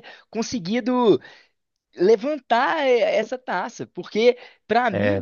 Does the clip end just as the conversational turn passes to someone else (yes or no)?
no